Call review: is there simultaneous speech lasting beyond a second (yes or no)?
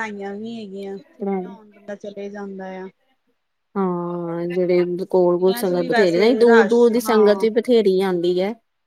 yes